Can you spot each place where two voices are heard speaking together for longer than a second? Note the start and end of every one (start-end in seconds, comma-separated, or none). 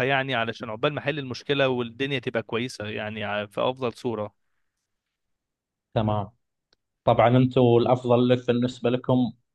none